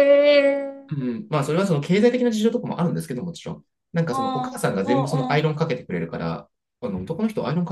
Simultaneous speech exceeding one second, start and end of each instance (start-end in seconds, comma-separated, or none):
4.1-5.4